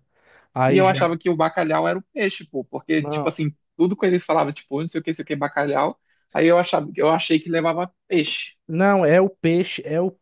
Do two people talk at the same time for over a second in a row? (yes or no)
no